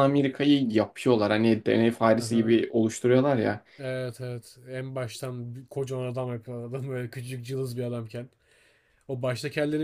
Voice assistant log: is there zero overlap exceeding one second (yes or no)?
yes